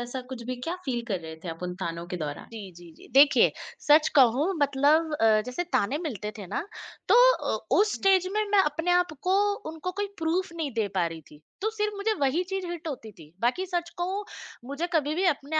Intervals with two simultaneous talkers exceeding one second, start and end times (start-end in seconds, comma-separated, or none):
none